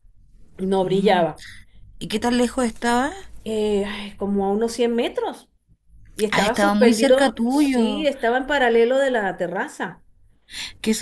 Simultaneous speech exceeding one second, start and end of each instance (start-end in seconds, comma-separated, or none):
6.3-8.1